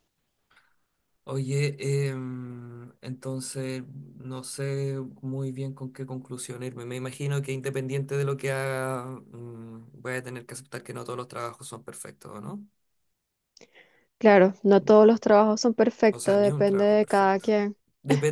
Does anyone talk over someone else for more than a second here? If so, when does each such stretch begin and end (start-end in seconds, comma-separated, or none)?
16.1-17.4